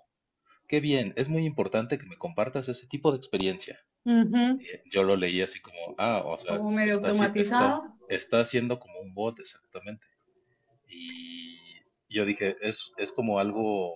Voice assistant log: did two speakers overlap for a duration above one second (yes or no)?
yes